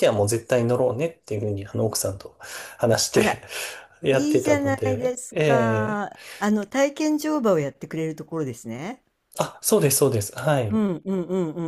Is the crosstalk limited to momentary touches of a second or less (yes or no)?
no